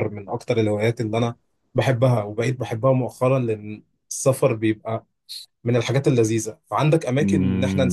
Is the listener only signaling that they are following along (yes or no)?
no